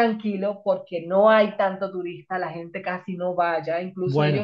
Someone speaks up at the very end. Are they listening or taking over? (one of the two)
listening